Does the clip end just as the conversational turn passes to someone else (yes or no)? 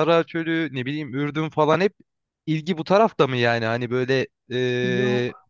no